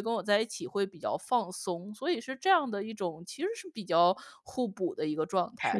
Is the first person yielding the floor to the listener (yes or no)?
yes